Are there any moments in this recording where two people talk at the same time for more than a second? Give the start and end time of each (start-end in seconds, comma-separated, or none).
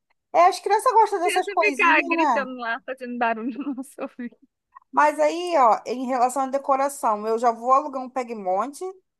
1.2-2.5